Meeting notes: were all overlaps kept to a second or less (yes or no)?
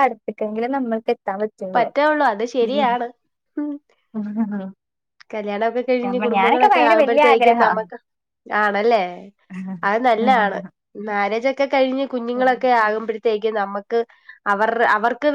no